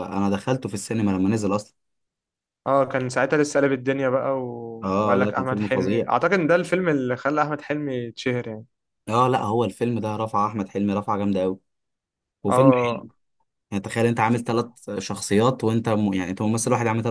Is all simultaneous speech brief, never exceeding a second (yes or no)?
no